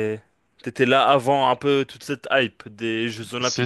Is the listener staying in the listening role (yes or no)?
no